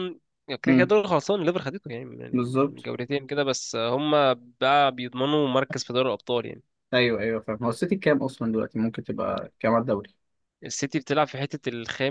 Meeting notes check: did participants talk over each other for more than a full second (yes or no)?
no